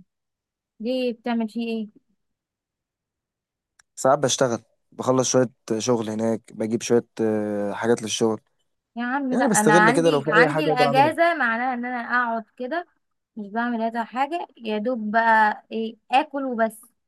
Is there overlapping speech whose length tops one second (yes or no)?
yes